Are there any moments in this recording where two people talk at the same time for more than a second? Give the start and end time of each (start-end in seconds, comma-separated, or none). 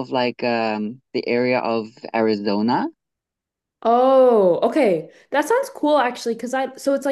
none